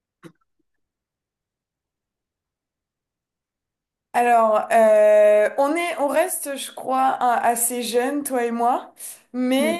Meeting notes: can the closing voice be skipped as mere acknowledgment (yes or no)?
yes